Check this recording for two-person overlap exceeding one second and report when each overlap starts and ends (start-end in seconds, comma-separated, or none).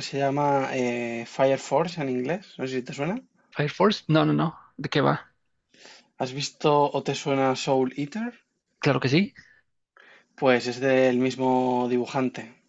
none